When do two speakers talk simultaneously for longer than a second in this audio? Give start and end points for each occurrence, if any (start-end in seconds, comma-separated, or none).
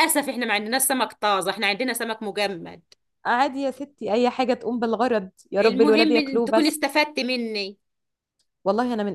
5.6-6.8